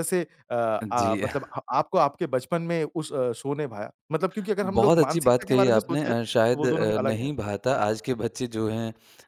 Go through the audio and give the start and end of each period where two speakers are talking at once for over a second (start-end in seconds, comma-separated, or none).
4.6-7.9